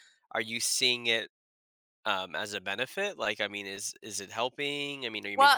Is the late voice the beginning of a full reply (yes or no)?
yes